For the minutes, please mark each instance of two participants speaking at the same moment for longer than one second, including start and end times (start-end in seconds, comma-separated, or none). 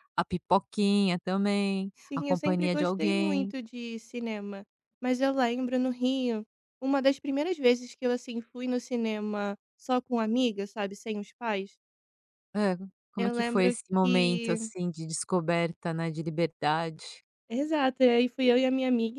1.9-3.5, 13.2-14.7